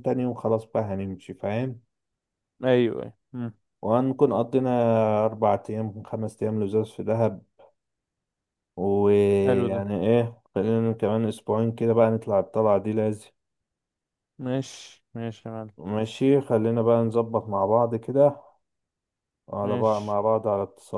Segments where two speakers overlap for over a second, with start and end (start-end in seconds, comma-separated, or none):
none